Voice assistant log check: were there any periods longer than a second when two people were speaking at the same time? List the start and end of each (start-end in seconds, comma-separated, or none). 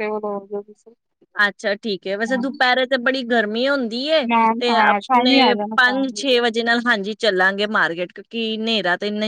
4.3-6.4